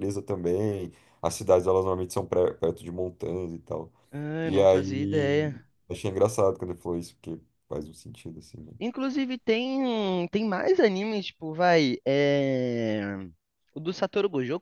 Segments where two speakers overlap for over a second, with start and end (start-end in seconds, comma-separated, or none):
4.4-5.7